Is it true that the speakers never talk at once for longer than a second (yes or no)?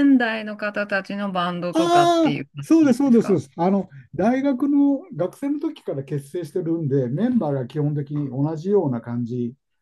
no